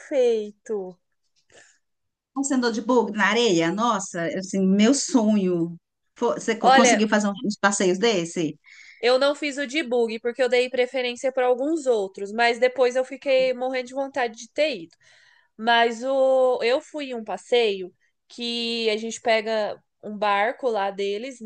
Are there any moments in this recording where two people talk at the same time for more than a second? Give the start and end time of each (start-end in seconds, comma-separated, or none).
none